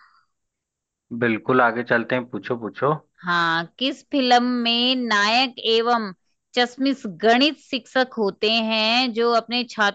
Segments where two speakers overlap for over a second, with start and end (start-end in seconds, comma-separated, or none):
none